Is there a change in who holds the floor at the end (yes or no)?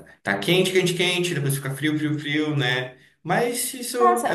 yes